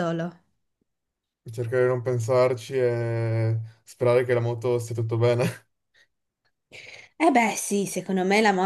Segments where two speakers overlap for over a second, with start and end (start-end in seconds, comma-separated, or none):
none